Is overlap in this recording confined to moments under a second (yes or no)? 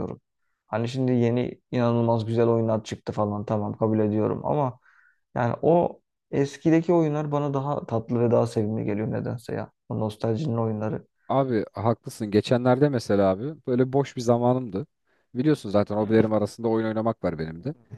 yes